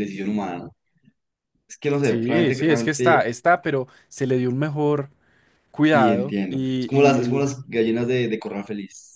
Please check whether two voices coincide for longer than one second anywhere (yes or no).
yes